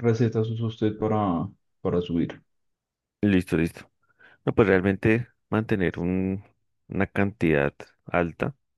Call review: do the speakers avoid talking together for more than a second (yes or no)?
yes